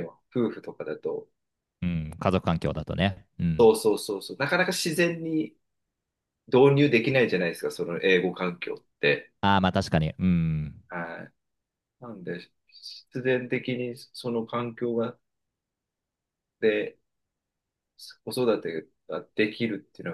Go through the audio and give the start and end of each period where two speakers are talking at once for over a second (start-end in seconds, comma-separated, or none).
none